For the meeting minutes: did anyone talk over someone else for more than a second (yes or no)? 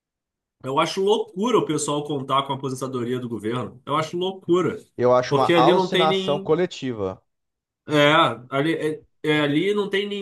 yes